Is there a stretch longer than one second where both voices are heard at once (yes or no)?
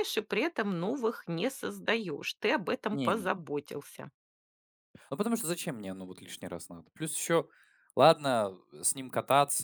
no